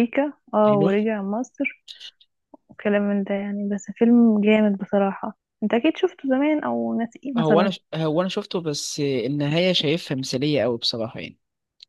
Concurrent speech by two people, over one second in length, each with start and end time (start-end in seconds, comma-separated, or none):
none